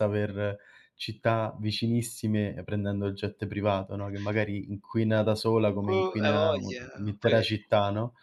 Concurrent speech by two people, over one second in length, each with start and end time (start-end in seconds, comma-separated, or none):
5.9-7.4